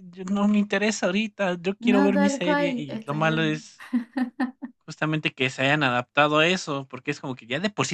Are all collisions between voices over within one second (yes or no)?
no